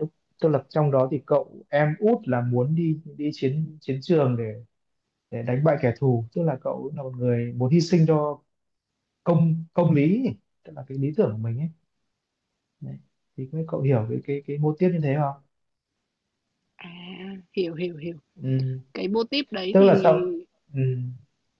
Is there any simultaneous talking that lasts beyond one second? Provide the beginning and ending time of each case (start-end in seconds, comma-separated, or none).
none